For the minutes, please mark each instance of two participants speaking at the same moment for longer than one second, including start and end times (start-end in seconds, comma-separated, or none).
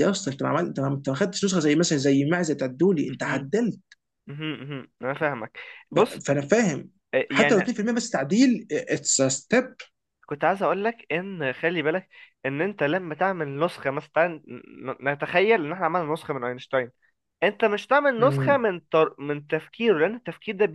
none